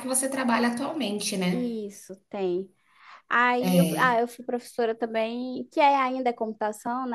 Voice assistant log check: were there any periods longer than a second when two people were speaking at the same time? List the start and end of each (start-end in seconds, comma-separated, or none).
none